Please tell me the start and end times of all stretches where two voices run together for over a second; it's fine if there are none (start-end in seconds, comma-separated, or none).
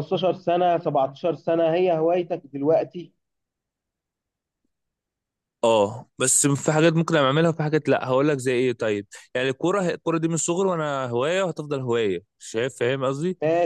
none